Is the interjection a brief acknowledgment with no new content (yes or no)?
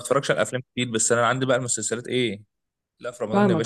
no